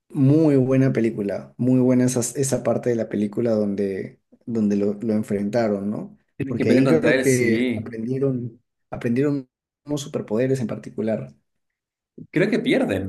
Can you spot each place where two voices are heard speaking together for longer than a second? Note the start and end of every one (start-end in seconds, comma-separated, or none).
6.4-8.0